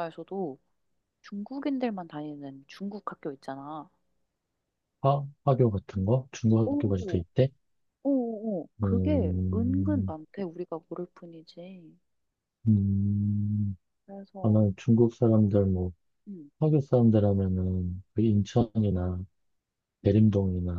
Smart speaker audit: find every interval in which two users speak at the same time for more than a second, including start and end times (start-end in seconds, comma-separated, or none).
8.8-10.1